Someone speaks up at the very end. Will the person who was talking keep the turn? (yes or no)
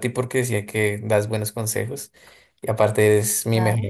yes